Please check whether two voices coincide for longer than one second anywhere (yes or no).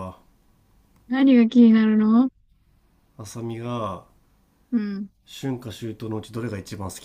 no